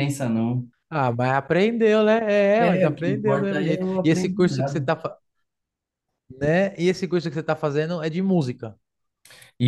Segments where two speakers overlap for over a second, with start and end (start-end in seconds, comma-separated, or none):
2.7-4.8